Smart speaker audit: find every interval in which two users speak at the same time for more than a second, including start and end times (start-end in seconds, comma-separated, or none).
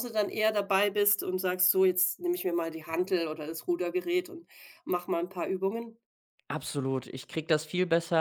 none